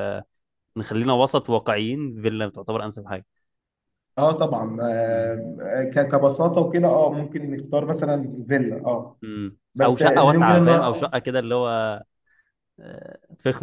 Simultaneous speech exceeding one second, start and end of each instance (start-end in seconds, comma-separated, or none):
9.8-11.1